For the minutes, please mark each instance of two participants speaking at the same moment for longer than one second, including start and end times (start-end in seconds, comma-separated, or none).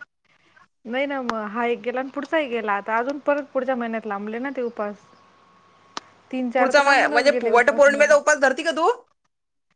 6.6-8.1